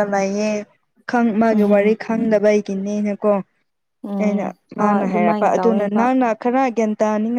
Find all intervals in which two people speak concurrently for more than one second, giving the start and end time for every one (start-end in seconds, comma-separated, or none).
4.2-6.0